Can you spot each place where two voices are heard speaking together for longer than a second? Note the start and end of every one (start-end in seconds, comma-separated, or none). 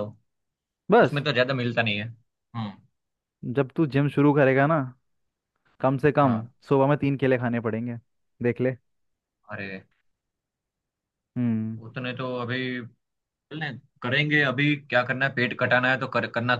none